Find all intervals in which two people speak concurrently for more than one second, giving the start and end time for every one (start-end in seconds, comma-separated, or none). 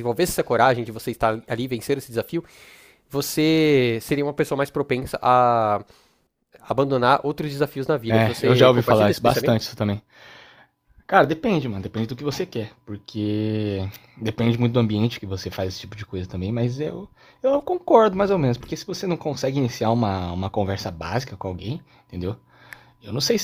8.1-9.6